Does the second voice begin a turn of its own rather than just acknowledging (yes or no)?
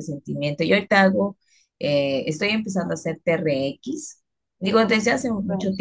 no